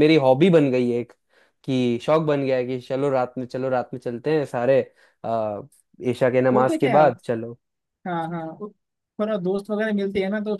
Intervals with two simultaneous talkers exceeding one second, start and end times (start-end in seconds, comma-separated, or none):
none